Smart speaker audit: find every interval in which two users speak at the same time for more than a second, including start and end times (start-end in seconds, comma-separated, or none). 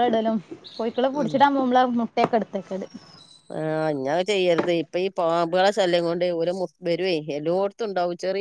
none